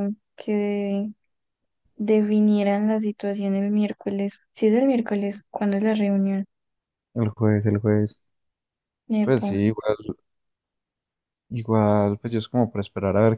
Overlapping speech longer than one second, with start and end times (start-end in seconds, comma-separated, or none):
none